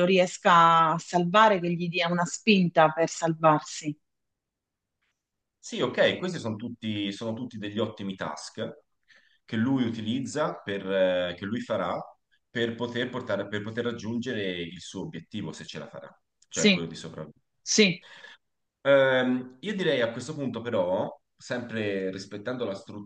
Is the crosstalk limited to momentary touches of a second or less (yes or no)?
yes